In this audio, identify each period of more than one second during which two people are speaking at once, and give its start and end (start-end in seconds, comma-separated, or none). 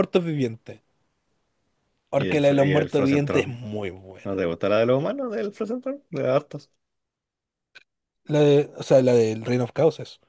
2.1-3.6